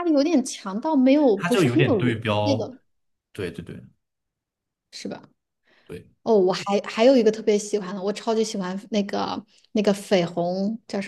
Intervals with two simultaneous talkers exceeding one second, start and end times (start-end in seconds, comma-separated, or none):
1.4-2.7